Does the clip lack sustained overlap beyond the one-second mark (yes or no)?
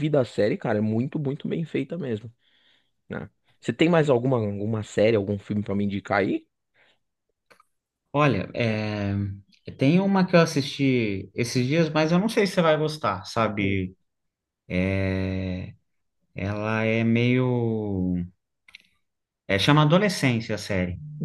yes